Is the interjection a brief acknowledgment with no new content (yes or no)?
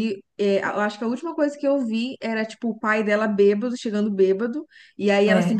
yes